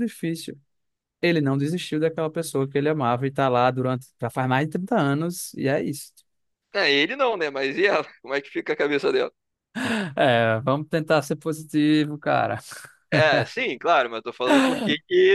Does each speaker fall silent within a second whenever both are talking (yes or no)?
yes